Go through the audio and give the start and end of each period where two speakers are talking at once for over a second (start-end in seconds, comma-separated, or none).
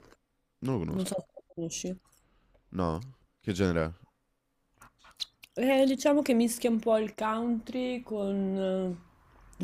none